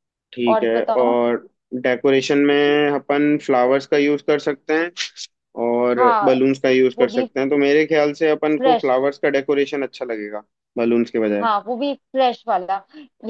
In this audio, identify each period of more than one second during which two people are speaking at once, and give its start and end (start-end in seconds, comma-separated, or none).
none